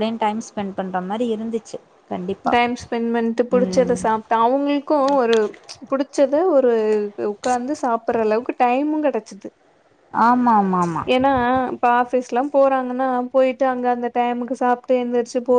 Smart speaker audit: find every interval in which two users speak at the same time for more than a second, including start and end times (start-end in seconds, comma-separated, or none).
none